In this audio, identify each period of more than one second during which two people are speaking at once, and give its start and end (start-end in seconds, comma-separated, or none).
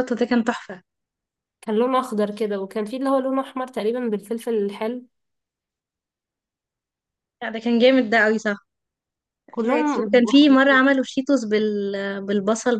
9.6-10.8